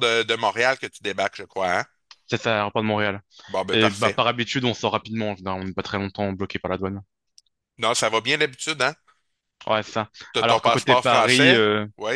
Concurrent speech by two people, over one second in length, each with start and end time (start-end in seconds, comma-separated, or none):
10.3-11.6